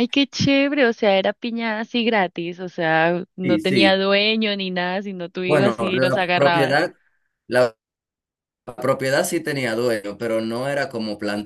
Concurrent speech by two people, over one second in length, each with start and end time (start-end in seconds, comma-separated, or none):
5.5-6.8